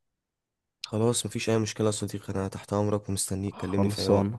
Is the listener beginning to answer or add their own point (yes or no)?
yes